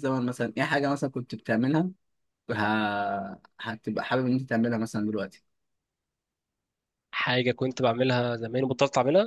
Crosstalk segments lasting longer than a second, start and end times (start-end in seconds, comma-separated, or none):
none